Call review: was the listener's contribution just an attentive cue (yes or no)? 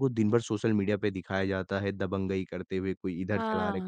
no